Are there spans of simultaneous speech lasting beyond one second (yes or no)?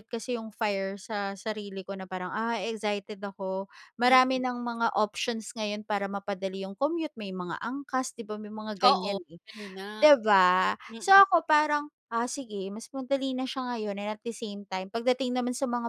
no